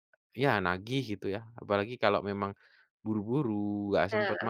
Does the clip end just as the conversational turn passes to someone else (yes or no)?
no